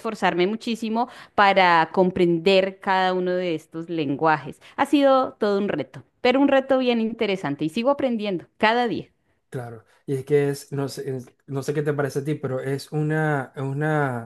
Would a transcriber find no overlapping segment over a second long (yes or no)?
yes